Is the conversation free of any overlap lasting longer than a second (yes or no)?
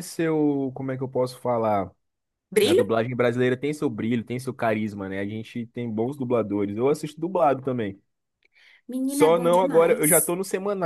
no